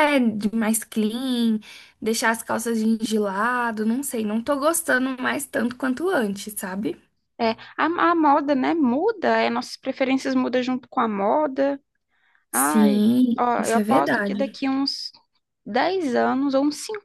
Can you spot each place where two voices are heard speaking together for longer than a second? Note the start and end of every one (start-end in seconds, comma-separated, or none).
12.5-14.6